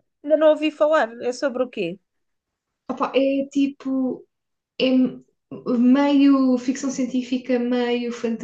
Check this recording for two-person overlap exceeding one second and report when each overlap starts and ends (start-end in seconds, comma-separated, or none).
none